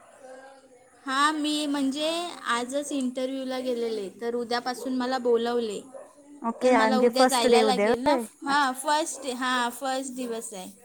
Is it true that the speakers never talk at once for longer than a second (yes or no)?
no